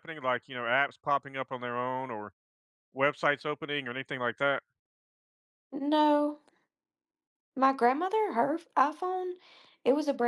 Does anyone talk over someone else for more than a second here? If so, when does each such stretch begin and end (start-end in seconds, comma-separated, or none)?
none